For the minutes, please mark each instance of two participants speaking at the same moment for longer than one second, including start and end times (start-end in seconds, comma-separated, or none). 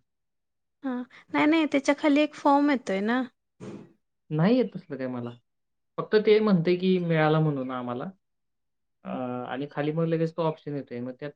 none